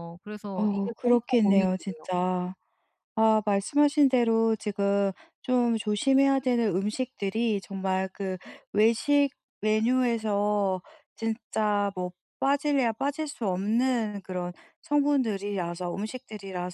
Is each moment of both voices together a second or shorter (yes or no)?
no